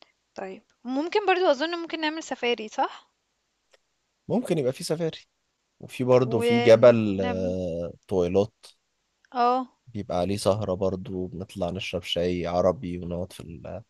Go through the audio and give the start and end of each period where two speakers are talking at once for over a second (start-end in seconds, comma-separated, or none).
6.4-7.6